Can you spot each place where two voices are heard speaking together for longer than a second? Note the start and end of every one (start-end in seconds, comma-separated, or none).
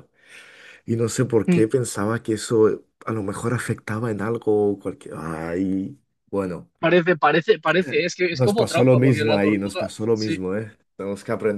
8.3-10.4